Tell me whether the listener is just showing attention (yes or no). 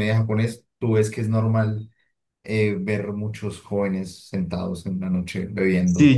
no